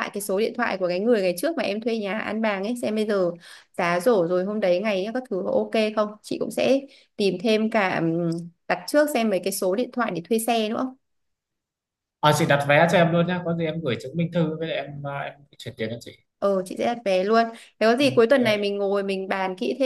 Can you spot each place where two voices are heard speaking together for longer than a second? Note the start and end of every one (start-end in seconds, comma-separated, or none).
none